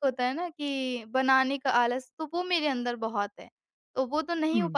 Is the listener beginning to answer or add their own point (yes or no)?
no